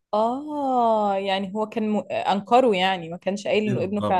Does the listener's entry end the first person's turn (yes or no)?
yes